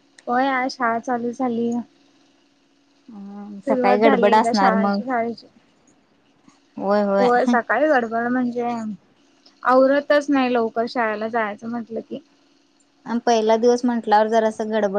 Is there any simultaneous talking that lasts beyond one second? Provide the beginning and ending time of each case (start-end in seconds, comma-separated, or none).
3.6-5.0